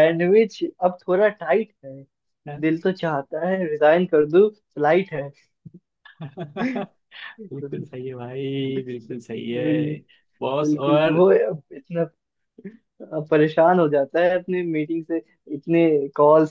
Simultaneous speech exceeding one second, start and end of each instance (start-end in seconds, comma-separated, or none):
none